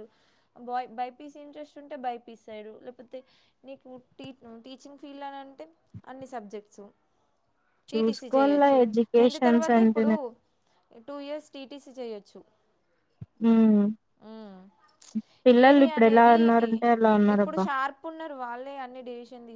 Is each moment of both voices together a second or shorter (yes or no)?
no